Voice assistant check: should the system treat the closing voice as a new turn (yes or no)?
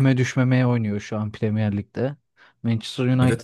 no